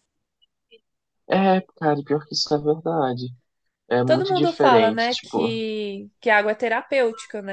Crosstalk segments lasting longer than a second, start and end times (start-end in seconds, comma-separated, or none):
4.0-5.5